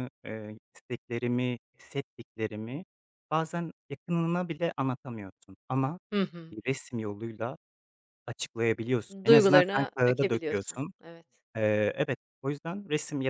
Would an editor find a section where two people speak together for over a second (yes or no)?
yes